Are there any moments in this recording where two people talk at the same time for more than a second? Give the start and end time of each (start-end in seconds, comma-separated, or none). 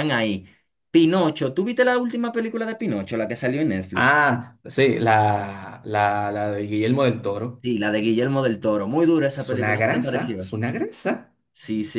9.3-10.5